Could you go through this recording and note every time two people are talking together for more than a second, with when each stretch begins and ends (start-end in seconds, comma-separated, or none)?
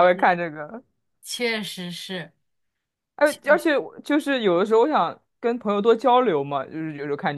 none